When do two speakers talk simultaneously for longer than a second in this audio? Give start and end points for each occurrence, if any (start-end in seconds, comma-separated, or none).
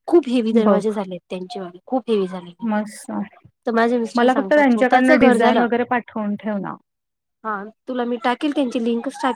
4.2-5.7